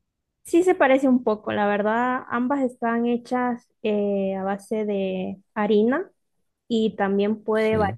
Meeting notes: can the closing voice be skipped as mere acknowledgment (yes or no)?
yes